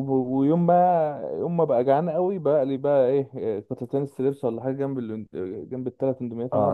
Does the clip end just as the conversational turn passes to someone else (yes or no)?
yes